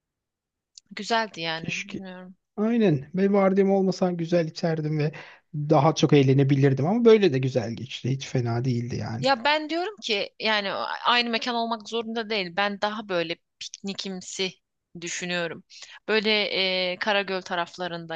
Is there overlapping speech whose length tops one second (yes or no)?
no